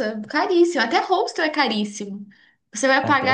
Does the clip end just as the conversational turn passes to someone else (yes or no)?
no